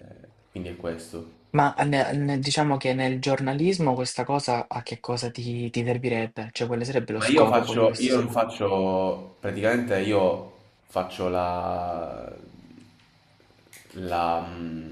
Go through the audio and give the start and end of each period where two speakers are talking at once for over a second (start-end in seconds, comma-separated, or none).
7.2-8.4